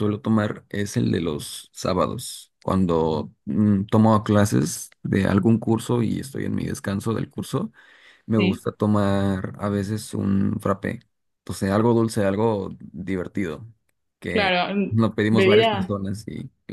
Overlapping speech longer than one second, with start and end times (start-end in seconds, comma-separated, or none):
14.3-16.0